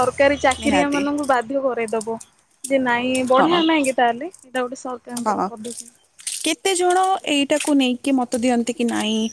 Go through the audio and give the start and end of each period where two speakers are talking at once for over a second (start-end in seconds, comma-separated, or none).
none